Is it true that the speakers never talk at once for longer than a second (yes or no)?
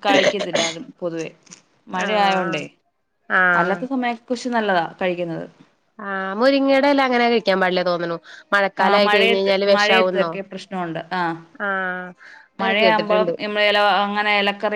no